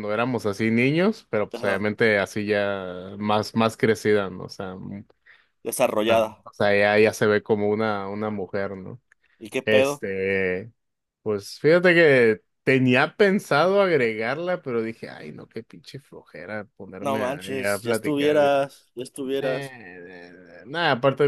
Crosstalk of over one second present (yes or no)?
yes